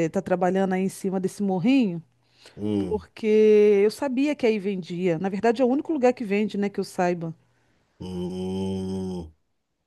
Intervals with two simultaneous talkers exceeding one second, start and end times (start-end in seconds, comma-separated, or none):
none